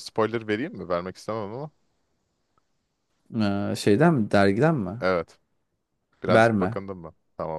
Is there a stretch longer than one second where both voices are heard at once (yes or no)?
no